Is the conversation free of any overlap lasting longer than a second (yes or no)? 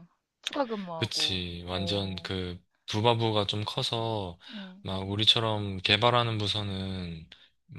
no